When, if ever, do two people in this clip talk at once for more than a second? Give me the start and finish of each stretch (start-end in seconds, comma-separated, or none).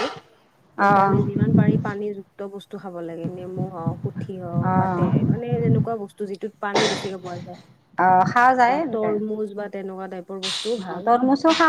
none